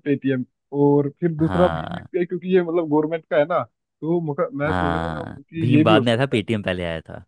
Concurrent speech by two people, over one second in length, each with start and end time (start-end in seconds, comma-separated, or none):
4.7-6.4